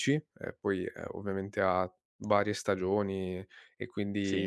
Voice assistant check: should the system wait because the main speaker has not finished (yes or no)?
yes